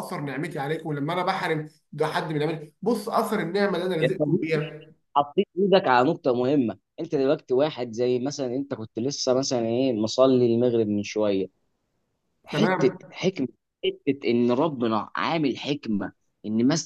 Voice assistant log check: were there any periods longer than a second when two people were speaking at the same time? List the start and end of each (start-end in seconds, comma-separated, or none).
none